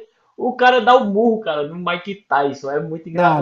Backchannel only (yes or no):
yes